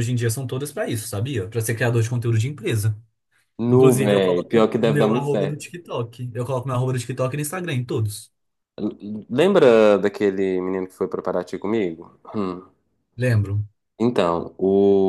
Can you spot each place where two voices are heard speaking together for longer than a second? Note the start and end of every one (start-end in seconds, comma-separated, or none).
3.7-5.6